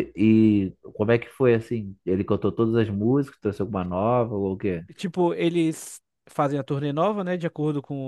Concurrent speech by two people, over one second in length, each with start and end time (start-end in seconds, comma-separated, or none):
none